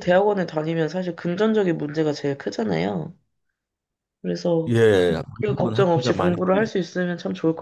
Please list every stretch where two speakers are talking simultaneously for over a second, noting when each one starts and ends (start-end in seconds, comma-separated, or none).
4.7-6.4